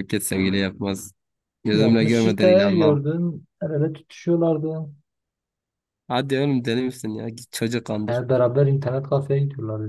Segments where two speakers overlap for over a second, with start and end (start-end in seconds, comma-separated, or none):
1.7-3.0